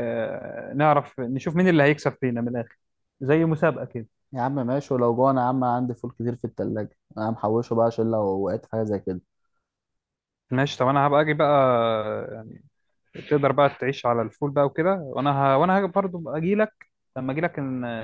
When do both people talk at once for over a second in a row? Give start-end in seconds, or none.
none